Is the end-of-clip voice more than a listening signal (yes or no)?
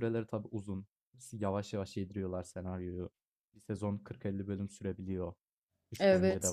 yes